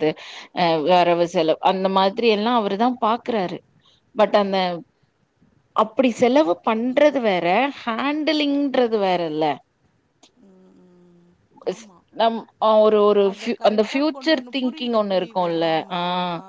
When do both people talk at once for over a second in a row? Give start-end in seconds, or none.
13.3-16.0